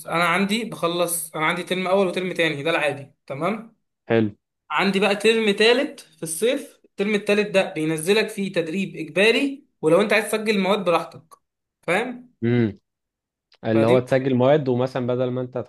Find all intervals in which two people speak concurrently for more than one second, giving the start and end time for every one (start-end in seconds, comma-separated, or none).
none